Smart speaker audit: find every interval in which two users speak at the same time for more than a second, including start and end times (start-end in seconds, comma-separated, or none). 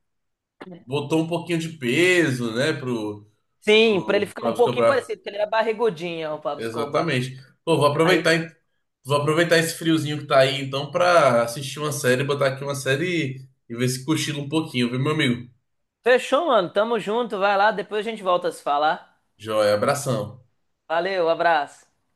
3.8-5.1